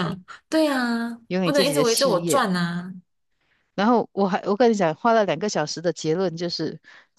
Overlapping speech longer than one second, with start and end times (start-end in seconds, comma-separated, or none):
1.3-2.5